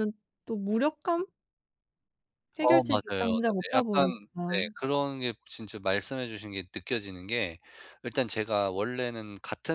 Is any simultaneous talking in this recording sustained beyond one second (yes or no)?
yes